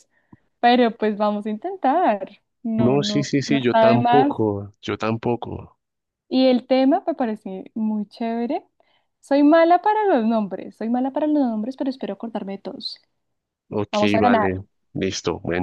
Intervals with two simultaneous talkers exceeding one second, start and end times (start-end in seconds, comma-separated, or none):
2.8-4.3